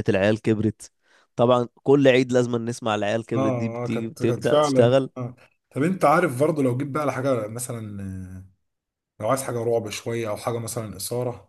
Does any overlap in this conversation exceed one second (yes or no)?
yes